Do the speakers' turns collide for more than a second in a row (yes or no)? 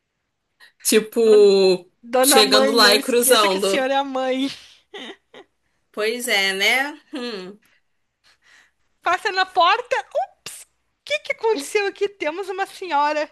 yes